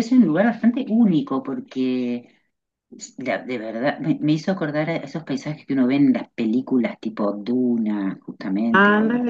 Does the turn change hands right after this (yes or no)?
yes